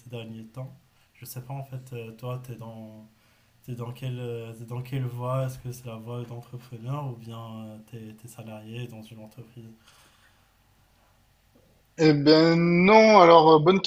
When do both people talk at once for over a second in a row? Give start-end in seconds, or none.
none